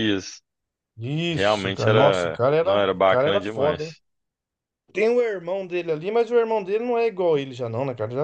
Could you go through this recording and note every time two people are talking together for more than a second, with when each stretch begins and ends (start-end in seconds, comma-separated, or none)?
1.3-4.0